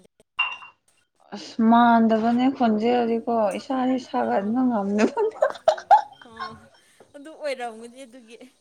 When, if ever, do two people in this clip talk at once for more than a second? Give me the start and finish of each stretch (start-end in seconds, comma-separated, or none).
none